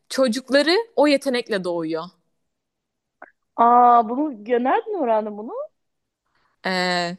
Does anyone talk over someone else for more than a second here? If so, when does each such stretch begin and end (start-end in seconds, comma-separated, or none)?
none